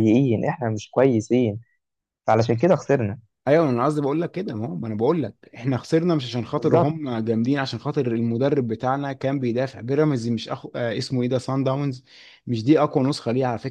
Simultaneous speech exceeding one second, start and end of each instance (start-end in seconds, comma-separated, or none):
none